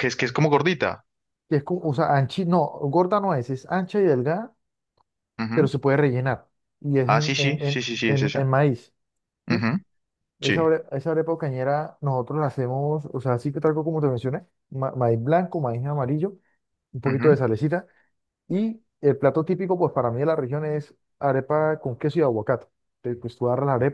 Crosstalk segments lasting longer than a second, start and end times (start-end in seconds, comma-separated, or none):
7.0-8.5